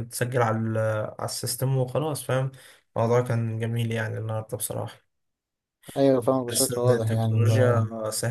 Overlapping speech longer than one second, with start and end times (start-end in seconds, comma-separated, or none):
6.5-7.8